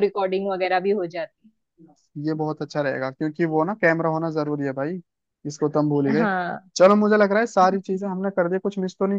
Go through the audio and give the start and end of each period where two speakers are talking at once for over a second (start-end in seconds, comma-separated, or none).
none